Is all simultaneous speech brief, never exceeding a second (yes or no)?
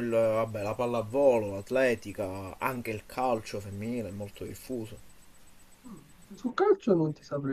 yes